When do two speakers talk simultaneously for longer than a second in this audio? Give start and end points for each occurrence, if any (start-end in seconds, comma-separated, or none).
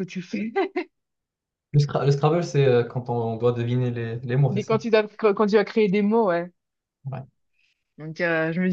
none